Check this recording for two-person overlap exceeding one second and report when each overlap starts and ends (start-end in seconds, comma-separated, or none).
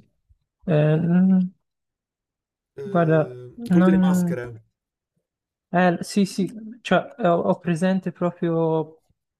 2.8-4.4